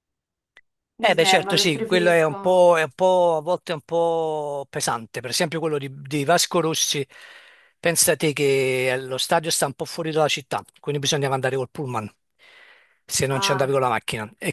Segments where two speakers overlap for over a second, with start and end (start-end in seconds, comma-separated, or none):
1.0-2.4